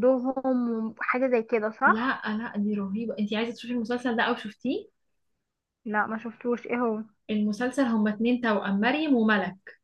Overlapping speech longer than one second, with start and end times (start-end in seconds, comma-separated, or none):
none